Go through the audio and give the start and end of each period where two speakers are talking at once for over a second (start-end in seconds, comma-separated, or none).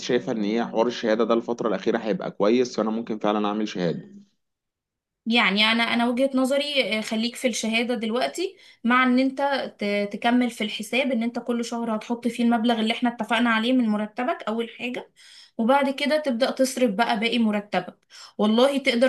none